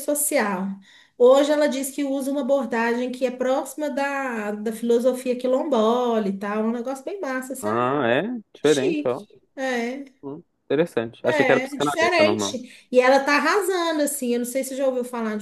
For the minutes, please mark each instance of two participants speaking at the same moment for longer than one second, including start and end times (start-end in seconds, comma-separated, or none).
11.2-12.6